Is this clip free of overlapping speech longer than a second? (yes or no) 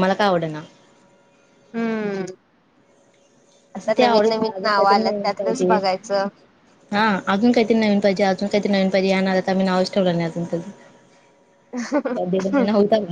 no